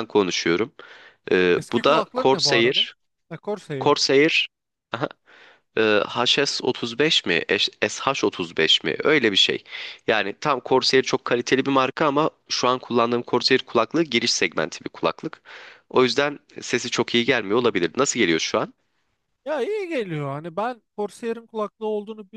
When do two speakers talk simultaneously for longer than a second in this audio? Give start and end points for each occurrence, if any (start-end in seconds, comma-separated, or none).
1.6-2.9